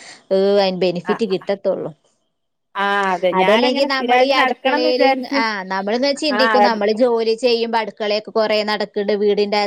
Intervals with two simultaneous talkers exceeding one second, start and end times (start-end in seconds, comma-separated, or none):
3.4-5.4